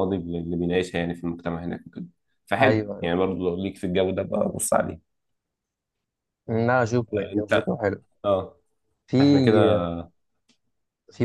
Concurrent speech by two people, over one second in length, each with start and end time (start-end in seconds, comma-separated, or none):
none